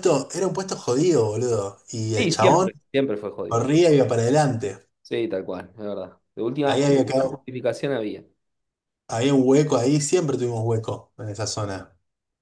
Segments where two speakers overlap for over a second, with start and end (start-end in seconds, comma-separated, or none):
none